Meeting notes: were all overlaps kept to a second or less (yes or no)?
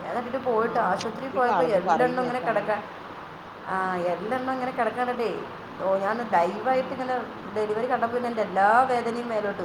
no